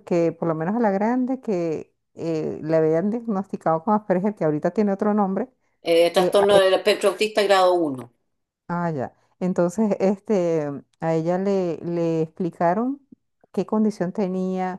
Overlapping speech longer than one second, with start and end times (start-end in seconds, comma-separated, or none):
none